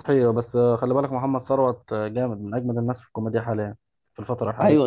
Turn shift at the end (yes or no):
yes